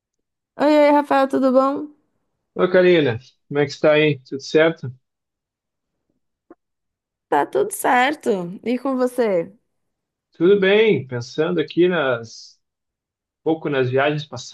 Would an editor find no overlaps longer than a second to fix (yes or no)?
yes